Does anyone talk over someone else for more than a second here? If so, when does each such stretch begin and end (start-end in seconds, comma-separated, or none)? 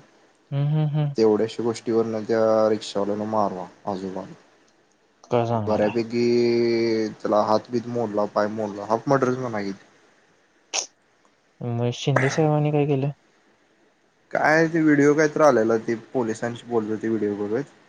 none